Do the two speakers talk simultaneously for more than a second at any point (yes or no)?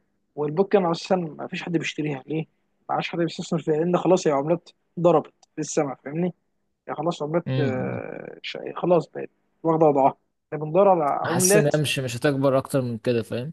no